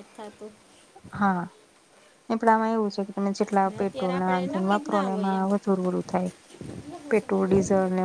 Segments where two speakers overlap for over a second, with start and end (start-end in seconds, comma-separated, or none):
3.7-5.5